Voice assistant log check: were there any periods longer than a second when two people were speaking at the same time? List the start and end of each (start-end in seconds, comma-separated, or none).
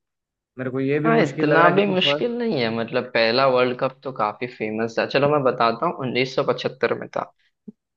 1.1-2.4